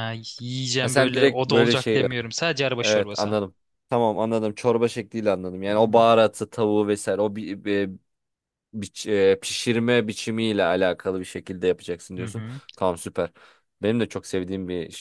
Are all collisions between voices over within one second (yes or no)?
no